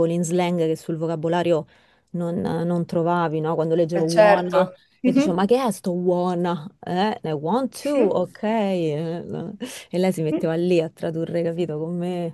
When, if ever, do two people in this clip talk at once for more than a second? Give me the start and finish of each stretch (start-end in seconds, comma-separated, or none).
3.9-5.5